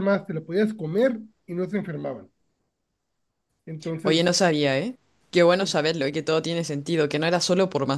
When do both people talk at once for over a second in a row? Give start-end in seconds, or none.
none